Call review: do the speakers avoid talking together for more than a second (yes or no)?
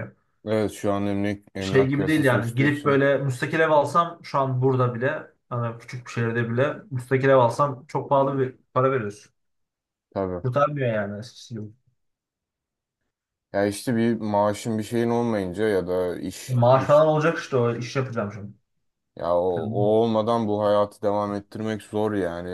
no